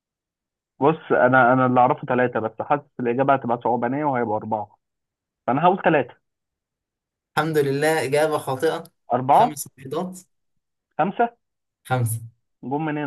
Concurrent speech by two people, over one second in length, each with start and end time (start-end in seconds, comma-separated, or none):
none